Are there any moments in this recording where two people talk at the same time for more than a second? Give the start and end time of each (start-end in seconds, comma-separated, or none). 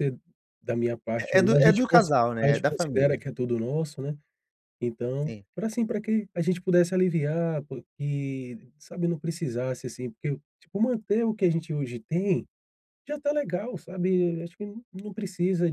1.2-3.2